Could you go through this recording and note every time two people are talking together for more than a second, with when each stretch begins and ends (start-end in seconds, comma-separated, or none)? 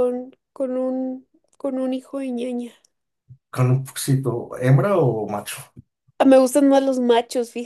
none